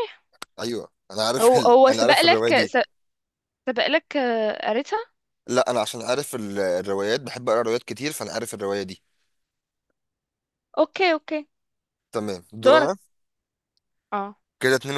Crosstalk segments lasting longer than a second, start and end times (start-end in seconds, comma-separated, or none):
1.4-2.8